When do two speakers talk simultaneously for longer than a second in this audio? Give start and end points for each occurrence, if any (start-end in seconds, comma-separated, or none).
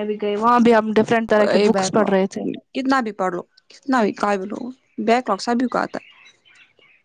none